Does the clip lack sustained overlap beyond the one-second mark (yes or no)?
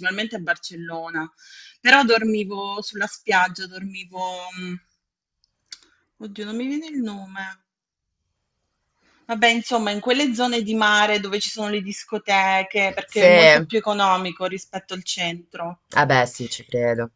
yes